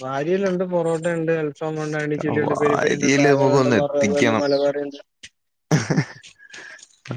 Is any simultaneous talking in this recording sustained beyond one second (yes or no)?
yes